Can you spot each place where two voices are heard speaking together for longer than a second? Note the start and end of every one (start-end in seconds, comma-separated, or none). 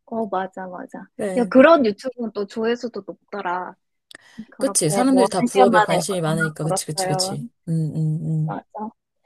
4.6-7.4